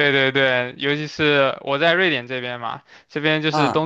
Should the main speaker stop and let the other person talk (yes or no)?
no